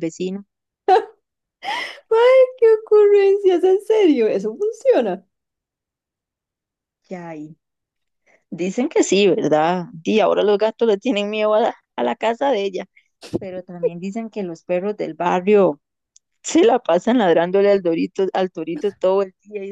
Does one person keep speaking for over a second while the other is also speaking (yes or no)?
no